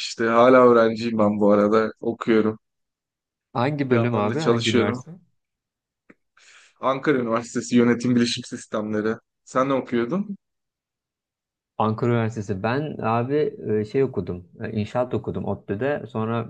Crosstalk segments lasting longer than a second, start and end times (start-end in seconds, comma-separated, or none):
3.8-5.0